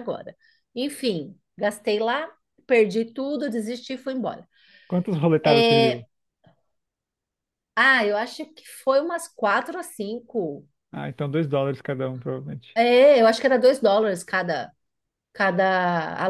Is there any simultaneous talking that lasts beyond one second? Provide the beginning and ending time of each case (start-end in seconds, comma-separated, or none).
none